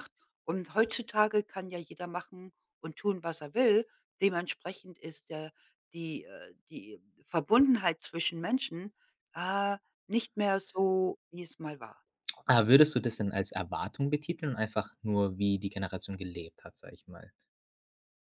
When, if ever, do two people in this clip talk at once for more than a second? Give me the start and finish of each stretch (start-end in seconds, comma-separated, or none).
none